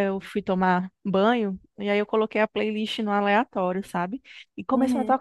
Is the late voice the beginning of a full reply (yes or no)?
no